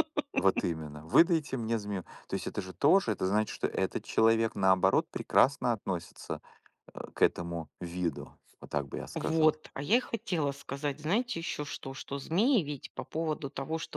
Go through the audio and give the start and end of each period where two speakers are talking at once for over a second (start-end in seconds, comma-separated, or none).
none